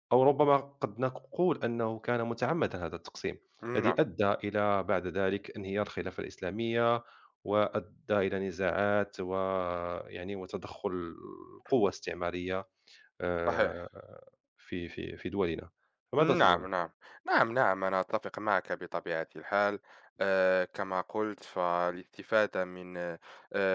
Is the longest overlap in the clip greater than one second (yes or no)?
no